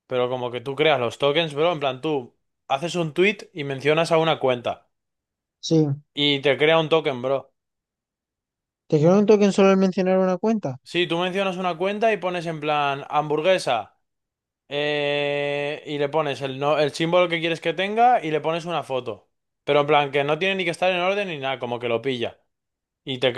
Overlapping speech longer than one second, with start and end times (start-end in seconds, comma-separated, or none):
none